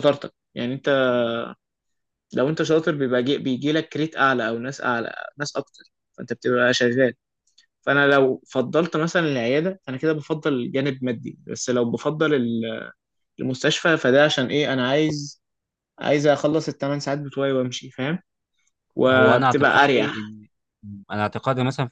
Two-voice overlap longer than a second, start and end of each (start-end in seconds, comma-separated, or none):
19.1-20.3